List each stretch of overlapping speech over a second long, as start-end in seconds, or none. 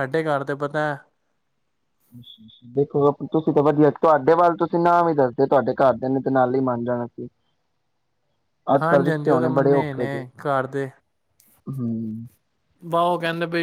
8.8-10.2